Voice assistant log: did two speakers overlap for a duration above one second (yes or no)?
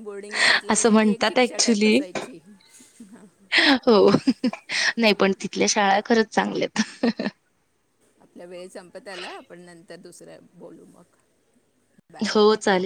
yes